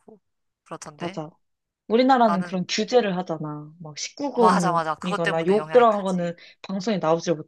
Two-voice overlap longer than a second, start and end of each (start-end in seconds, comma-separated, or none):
4.4-6.4